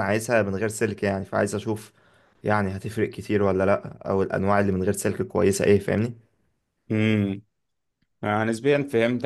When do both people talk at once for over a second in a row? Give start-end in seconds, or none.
none